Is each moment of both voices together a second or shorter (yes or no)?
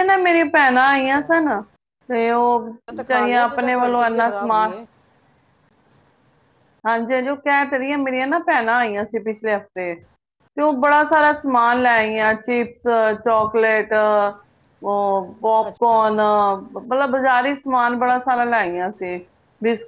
no